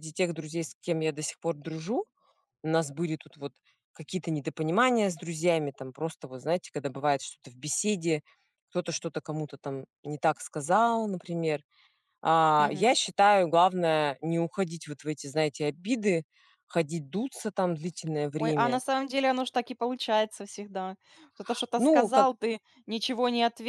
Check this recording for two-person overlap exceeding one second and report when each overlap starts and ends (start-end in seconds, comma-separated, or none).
none